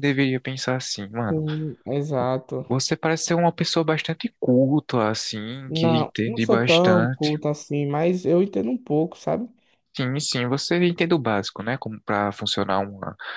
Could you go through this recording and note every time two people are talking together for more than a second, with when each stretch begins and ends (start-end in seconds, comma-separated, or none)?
5.7-7.4